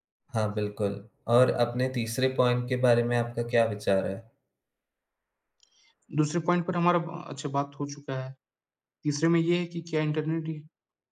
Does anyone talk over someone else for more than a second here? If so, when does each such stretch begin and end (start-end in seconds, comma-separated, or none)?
none